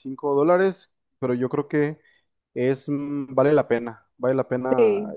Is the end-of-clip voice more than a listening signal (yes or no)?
no